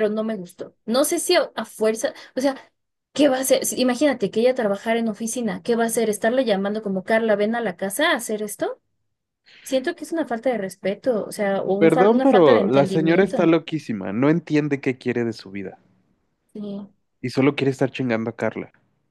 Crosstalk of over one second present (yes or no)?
yes